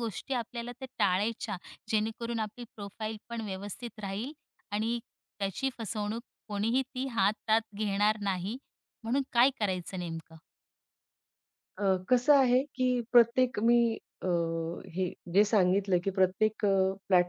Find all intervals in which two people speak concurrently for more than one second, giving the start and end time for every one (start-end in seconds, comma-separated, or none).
none